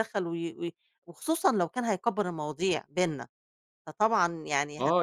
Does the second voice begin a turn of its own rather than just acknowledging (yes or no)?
yes